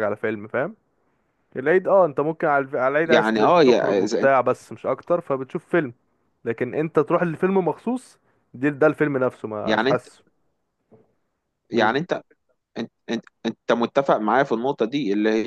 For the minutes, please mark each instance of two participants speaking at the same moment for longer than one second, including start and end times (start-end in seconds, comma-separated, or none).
3.0-4.4